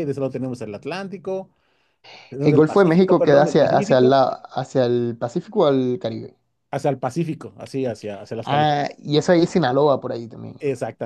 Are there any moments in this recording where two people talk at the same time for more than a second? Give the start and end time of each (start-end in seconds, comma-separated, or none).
2.4-4.2